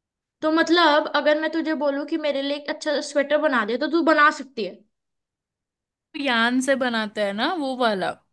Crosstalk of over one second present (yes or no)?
no